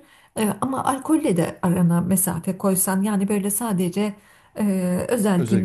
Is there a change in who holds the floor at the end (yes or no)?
no